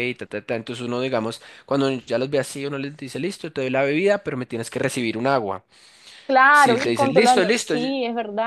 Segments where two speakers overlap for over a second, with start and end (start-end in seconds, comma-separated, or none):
6.5-8.0